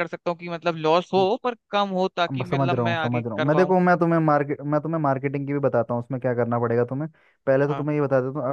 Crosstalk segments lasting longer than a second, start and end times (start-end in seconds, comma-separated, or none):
2.3-3.8